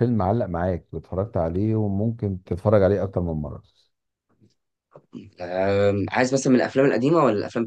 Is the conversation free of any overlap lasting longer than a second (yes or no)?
yes